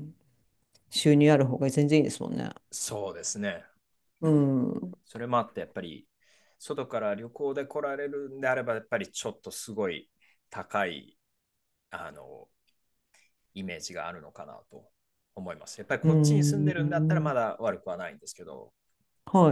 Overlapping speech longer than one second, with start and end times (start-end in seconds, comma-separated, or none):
16.0-17.3